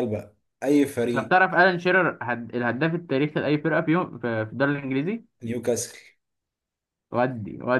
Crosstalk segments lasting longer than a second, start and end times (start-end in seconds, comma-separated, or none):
none